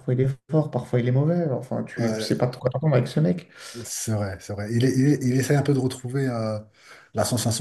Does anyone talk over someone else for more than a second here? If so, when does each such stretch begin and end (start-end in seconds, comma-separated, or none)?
none